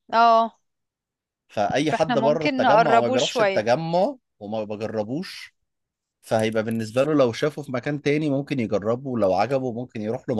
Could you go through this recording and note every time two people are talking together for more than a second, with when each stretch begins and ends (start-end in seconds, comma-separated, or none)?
1.9-3.6